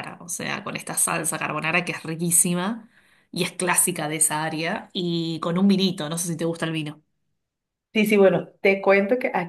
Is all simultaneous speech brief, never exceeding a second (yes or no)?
yes